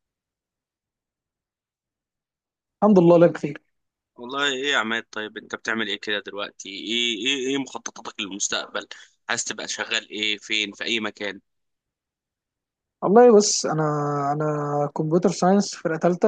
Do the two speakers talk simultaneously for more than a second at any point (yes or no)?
no